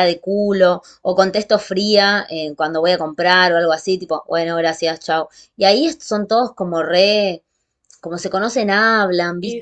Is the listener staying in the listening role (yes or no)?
no